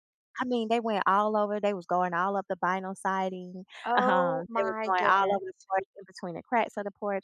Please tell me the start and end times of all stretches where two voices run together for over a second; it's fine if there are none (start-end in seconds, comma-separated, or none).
3.9-5.4